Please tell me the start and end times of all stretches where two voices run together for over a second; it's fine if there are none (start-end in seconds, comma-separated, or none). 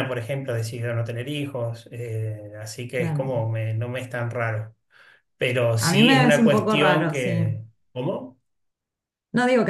5.8-7.5